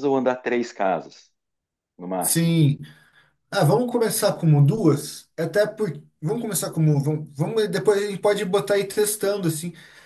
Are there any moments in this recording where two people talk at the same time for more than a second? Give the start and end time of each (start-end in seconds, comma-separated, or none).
none